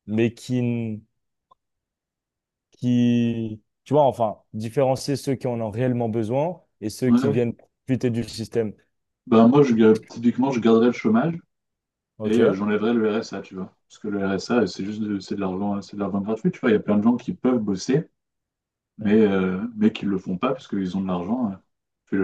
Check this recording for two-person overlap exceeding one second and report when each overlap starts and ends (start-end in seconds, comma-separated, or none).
none